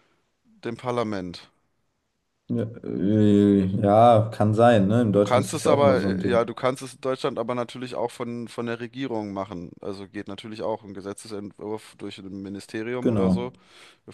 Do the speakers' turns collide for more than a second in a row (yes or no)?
yes